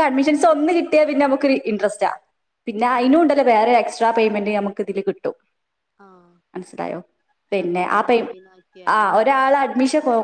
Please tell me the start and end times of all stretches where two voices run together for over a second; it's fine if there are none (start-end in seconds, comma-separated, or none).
none